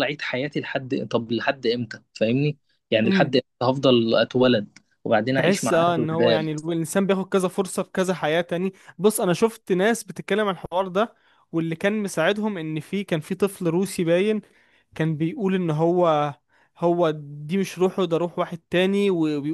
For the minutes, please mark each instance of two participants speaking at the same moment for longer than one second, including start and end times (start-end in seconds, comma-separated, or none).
5.4-6.6